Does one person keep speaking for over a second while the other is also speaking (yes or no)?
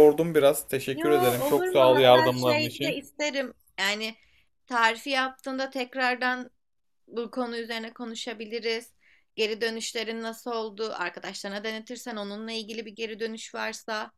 yes